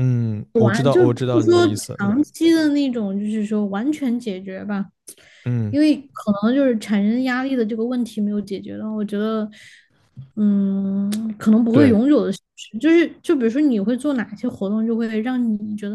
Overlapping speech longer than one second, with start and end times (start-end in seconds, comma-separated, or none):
0.6-2.2